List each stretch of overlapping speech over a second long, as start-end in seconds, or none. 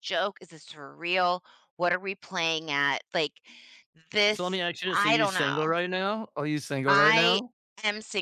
4.3-5.7